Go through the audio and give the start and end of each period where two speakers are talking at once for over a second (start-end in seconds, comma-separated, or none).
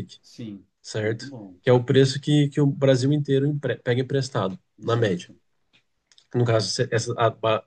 none